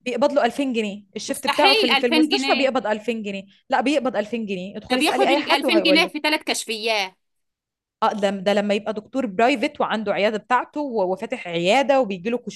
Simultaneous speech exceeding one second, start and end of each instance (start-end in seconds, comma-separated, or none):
1.3-2.7, 4.9-6.2